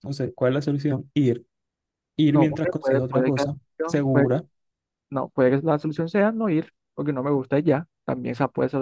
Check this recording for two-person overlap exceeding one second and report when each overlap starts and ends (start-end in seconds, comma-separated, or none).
2.3-4.3